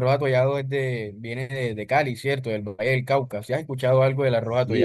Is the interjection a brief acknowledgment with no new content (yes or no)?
no